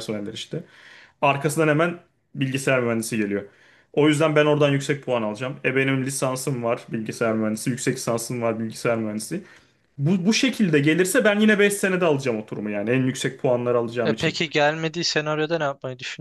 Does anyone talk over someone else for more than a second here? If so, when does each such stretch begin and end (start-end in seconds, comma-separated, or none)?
none